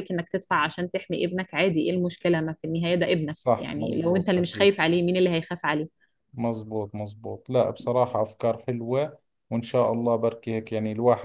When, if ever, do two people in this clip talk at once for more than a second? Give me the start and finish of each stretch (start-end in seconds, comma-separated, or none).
3.3-4.7